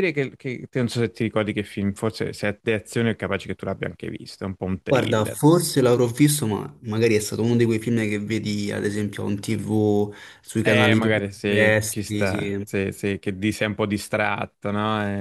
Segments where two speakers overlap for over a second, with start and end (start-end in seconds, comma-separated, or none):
10.6-12.7